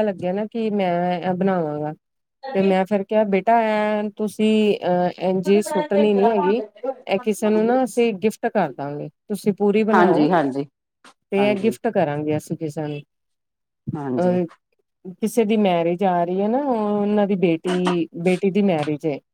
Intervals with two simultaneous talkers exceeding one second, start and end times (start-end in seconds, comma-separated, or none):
none